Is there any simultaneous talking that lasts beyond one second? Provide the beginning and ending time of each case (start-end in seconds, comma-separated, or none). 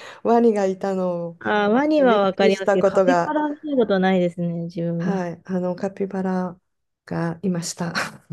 2.0-3.4